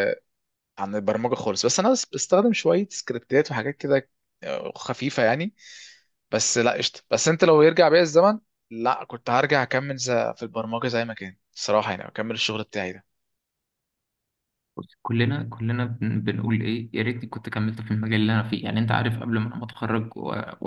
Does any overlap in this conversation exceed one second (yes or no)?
no